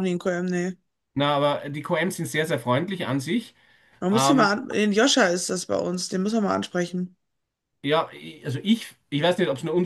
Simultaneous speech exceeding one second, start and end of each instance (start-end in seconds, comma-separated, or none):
none